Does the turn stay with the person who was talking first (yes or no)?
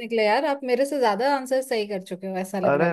no